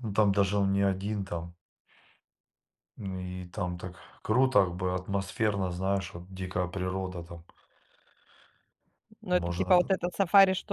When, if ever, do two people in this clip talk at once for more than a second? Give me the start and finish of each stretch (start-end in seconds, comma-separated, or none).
none